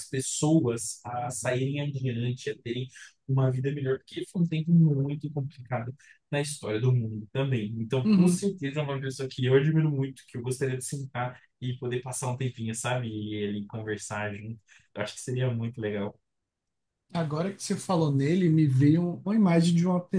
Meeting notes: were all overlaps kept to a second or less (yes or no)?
yes